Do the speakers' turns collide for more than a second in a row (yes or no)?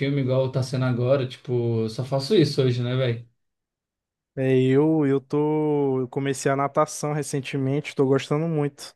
no